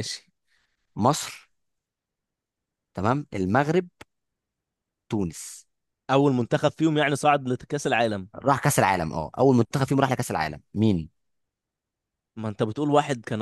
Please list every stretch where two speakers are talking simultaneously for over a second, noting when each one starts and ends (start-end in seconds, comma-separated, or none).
none